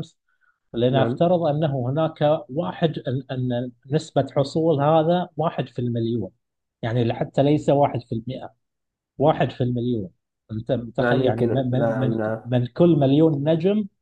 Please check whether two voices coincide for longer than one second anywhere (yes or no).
yes